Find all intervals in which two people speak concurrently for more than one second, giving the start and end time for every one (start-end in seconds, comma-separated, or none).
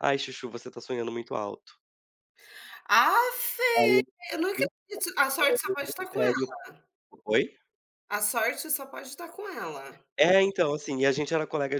none